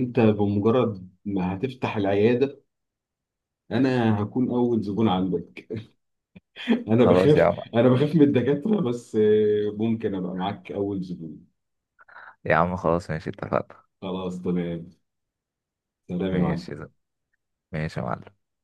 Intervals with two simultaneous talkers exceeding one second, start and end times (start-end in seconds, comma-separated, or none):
none